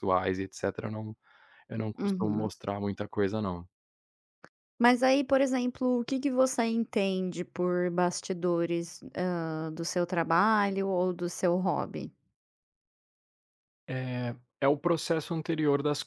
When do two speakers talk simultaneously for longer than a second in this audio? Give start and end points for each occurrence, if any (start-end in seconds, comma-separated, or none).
none